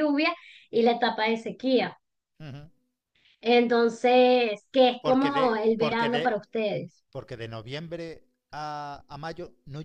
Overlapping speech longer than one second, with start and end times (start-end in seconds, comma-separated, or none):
5.0-6.2